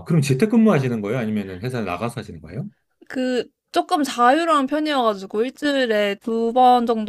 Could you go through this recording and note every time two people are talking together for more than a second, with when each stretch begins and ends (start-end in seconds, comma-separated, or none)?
none